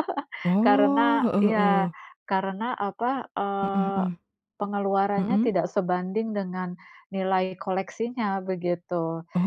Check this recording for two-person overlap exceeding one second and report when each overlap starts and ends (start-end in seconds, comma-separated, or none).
0.7-1.9